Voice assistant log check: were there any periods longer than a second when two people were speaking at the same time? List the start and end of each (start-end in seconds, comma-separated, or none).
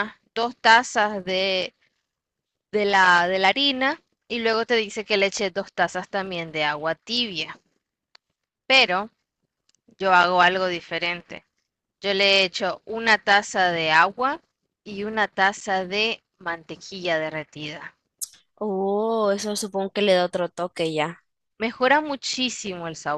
none